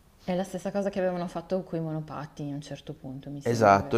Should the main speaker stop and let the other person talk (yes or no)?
yes